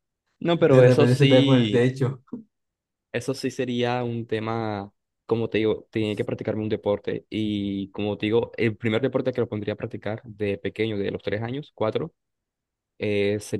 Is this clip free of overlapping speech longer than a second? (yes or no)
no